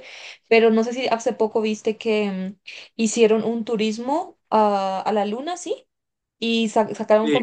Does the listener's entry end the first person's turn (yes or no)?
no